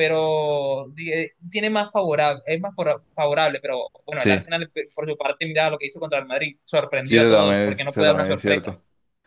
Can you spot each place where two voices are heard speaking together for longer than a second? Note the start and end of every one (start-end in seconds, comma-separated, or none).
7.0-8.7